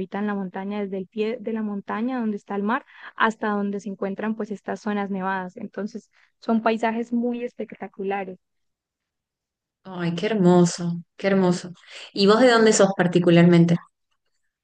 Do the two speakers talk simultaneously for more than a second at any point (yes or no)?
no